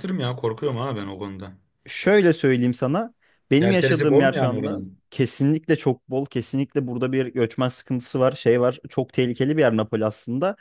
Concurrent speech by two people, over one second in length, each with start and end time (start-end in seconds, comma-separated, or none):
3.6-5.0